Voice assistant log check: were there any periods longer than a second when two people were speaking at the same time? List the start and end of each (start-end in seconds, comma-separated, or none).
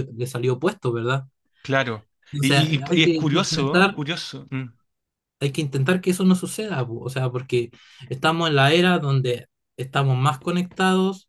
2.3-4.0